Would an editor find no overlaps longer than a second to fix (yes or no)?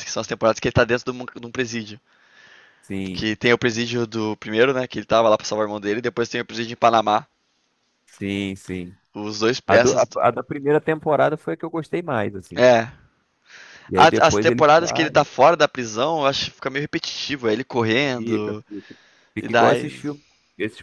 no